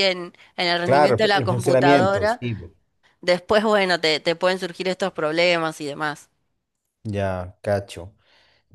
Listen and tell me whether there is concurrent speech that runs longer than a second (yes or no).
yes